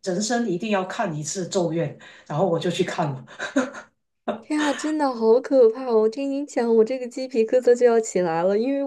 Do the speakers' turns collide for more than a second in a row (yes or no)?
no